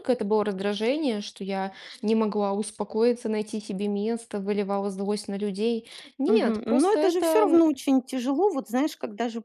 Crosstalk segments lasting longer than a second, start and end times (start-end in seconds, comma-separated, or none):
6.2-7.6